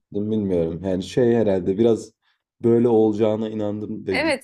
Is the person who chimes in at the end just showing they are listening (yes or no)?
no